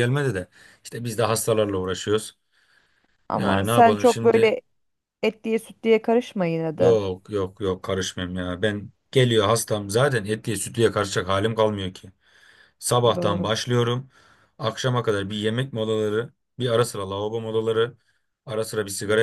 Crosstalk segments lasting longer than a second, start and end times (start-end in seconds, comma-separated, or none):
3.3-4.6